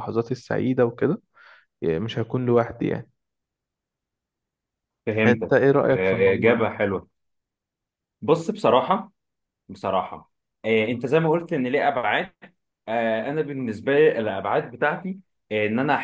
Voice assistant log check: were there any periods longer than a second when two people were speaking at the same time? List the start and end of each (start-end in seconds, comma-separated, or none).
5.3-6.7